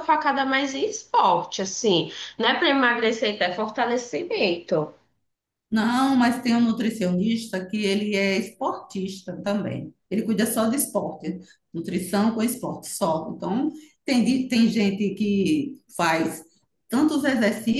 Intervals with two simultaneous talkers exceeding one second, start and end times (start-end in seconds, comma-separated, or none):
none